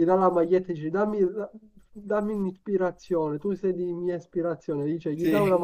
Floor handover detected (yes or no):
no